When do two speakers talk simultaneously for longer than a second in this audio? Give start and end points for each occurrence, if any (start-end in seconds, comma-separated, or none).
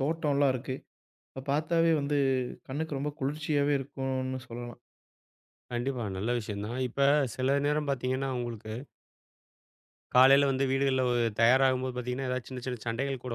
none